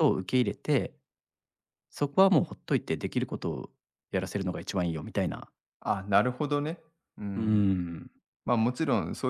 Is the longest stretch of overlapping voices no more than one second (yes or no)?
yes